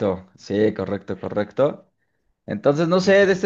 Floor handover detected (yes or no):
no